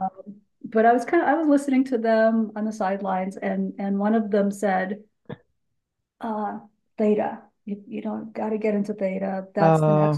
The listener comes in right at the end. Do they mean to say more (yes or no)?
no